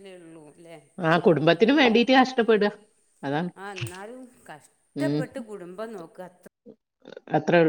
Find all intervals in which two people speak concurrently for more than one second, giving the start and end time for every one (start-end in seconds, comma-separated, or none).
none